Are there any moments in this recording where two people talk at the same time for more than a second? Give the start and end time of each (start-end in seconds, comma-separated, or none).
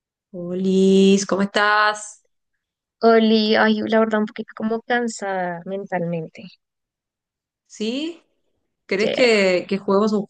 none